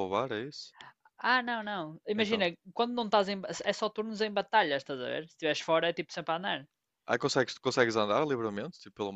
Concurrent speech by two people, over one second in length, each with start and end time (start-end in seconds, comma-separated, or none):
none